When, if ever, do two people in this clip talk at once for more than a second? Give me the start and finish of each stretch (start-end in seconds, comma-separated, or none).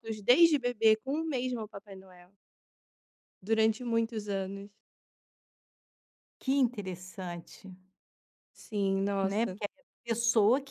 none